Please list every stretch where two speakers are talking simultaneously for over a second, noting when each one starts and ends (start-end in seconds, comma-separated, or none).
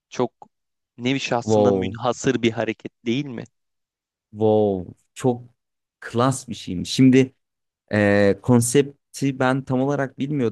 none